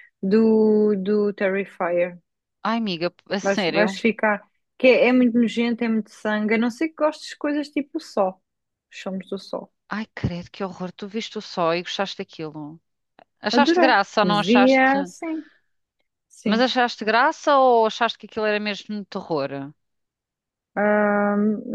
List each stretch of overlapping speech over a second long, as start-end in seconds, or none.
13.5-14.9